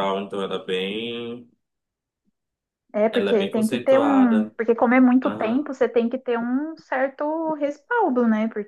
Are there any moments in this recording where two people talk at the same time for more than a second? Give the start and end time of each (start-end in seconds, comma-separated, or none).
3.1-4.5